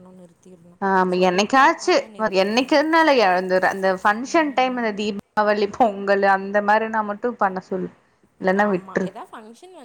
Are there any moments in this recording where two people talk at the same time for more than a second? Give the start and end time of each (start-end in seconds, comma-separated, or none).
0.9-2.8